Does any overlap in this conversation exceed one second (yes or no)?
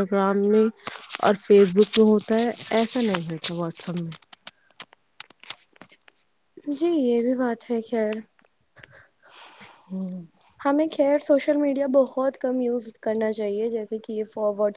no